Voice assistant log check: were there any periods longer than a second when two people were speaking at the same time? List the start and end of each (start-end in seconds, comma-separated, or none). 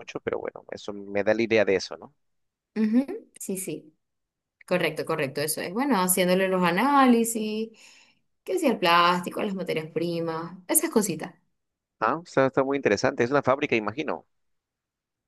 none